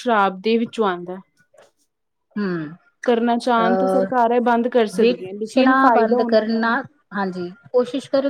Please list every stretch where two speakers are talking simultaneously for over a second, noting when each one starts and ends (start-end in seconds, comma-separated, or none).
5.0-6.6